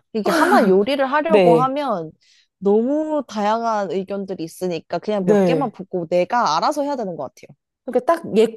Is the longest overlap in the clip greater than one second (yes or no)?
no